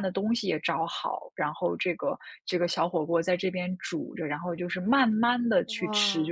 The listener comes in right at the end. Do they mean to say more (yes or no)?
no